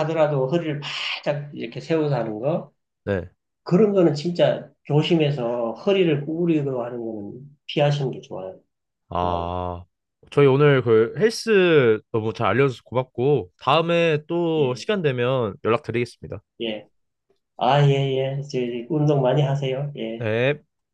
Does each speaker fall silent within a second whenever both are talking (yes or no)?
yes